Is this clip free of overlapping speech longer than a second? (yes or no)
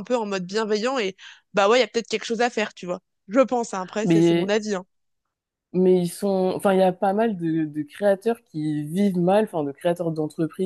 yes